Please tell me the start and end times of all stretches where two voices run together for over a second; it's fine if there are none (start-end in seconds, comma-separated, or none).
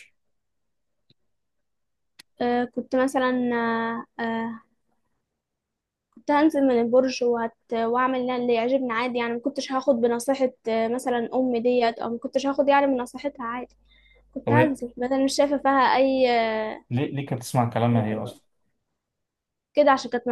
none